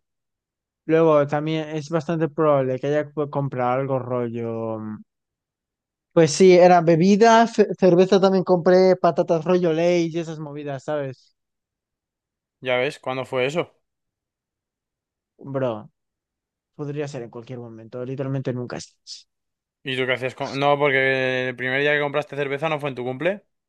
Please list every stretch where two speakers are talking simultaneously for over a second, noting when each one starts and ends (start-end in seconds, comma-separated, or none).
none